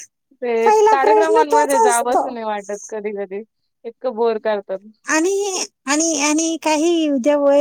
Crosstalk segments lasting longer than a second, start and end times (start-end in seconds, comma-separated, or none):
0.6-2.2